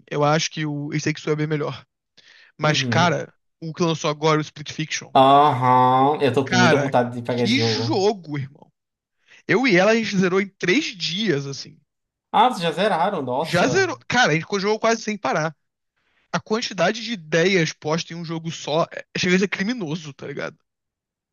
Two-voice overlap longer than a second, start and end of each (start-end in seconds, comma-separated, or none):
6.4-8.0